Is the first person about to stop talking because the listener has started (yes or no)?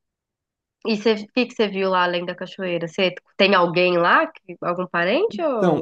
yes